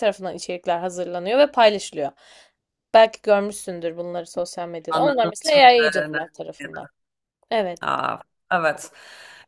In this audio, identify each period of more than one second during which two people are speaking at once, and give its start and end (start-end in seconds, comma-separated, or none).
4.9-6.2